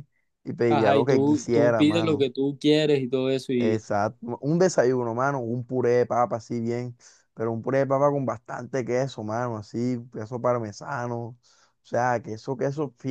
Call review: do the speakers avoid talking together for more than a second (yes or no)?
no